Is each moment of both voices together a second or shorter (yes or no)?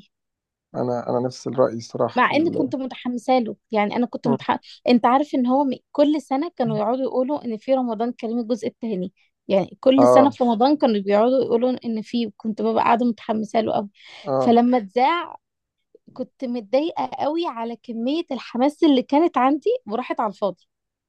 yes